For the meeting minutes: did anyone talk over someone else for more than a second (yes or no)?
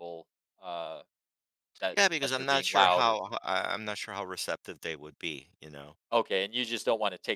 yes